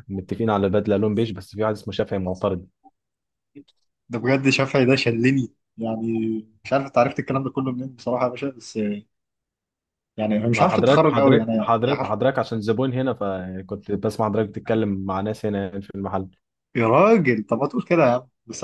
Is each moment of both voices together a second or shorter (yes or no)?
no